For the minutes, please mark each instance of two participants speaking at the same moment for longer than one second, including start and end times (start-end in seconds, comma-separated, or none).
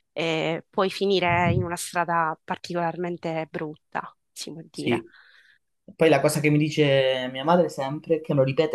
none